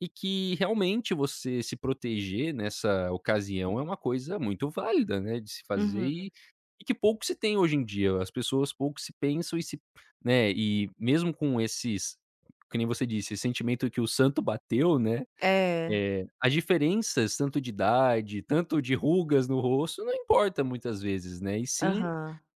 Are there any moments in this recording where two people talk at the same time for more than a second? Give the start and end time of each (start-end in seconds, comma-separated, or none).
none